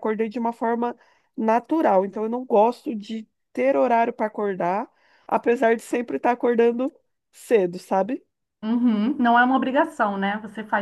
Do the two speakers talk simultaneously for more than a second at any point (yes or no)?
no